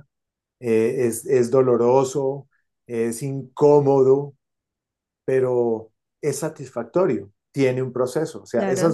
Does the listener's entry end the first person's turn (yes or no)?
no